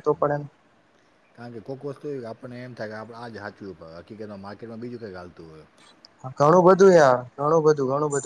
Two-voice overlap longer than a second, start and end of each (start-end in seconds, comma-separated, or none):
none